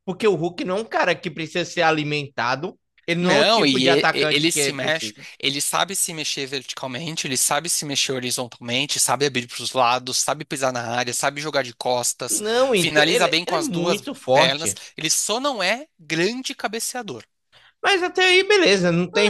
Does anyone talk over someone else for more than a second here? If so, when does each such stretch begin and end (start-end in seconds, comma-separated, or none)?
3.2-5.2, 12.3-14.8